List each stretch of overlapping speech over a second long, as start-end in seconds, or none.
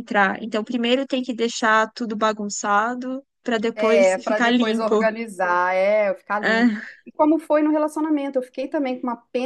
3.8-5.0